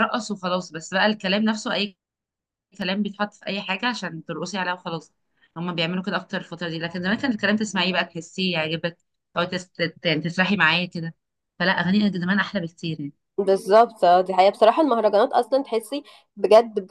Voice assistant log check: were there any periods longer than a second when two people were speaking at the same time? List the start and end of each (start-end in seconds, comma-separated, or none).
none